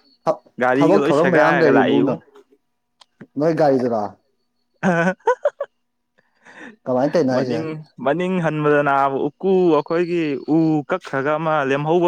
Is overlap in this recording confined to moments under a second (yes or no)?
no